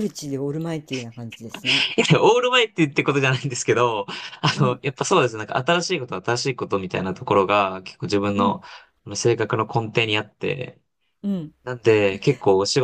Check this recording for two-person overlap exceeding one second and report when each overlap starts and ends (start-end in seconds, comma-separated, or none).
none